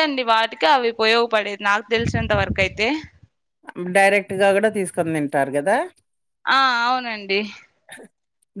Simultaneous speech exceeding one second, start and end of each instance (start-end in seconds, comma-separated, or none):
none